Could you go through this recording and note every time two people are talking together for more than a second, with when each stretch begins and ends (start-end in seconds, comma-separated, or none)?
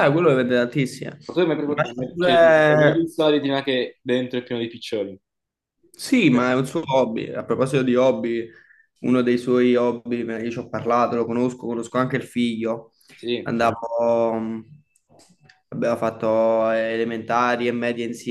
1.6-3.1